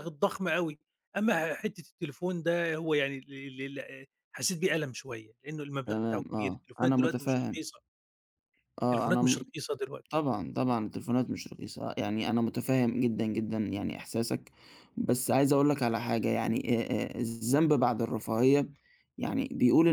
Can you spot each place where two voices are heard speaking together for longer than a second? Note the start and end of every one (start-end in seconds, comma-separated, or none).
5.8-7.6